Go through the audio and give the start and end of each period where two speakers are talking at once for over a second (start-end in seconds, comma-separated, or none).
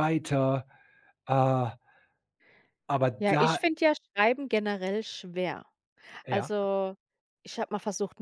none